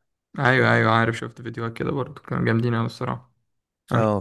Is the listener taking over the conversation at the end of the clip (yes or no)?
yes